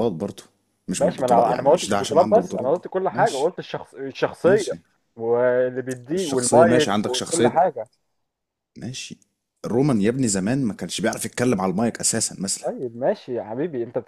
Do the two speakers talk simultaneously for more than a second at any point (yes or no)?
yes